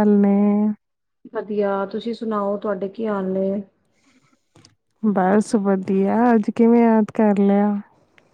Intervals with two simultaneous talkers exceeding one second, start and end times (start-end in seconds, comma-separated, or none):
none